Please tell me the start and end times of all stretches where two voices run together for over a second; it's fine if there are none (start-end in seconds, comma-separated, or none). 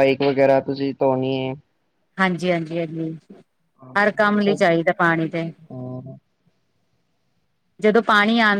none